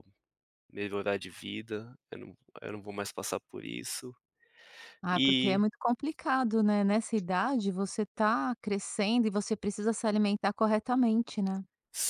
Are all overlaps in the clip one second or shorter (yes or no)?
yes